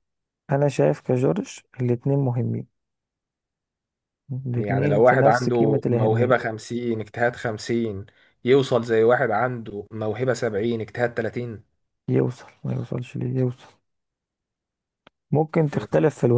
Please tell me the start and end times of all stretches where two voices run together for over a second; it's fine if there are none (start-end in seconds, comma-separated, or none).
4.5-6.4